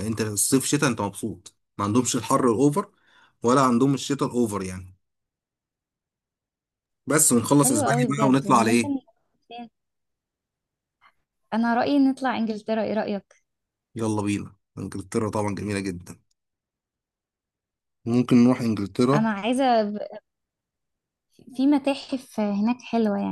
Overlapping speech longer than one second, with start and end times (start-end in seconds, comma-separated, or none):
7.6-8.9